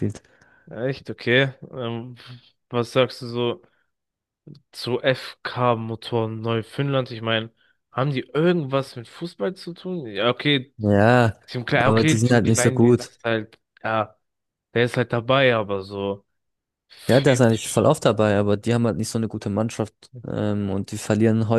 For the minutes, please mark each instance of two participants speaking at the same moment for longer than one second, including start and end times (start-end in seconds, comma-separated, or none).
11.8-13.1